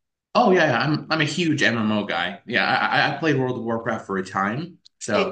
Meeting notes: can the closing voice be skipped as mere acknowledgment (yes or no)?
no